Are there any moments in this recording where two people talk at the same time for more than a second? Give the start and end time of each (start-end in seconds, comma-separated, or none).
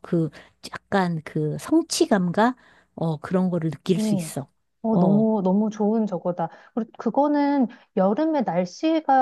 none